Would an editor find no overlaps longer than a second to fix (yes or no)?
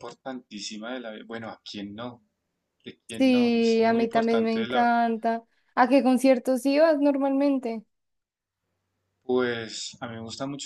no